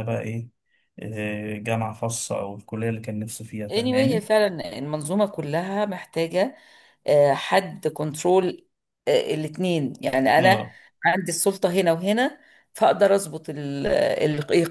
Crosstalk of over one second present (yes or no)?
no